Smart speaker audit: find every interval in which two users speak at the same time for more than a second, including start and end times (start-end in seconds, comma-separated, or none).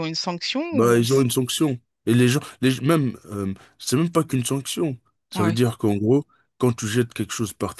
none